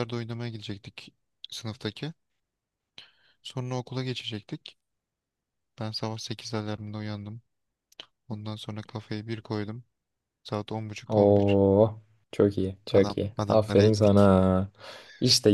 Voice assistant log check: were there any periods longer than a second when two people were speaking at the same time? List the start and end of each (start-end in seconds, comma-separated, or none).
12.9-14.3